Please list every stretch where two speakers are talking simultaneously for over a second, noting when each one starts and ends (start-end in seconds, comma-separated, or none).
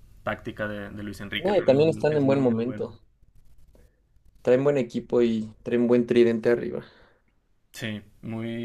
1.4-2.9